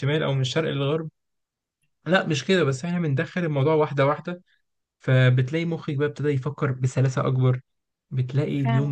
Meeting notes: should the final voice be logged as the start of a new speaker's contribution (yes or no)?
no